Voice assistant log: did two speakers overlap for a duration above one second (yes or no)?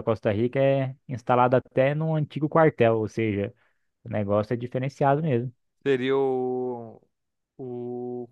no